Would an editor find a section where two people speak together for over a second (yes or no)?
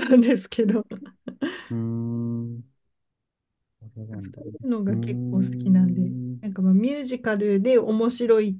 yes